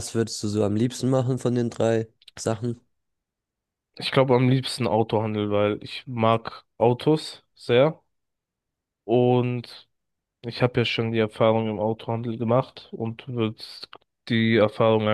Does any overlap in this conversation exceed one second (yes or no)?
no